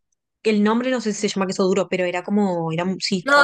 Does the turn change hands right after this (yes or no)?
yes